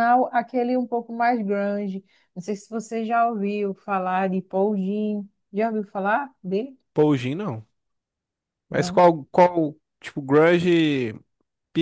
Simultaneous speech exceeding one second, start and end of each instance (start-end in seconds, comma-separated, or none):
none